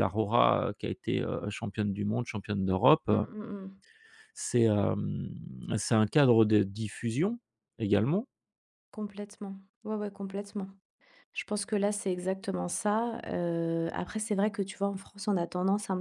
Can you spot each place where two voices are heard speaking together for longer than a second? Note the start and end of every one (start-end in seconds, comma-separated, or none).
none